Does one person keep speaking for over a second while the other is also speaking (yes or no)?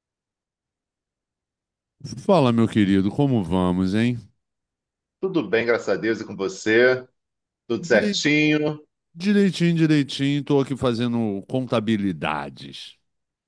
no